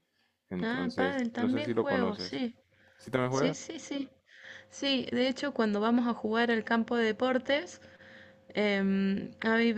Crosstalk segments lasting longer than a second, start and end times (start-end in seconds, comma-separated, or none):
0.6-2.4